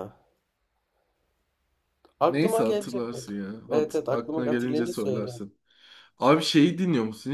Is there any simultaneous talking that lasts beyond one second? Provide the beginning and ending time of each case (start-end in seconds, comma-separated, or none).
2.3-5.4